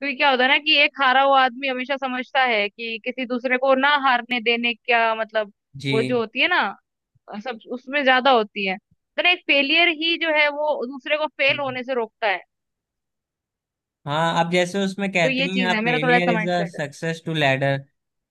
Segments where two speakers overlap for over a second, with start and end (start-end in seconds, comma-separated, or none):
15.2-16.8